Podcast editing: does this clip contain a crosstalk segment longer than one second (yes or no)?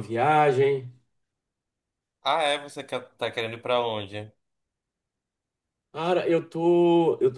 no